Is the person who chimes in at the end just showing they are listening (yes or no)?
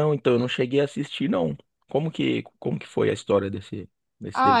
no